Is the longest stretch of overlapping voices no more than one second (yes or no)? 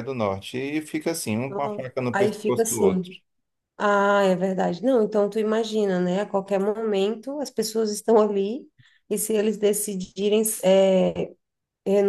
no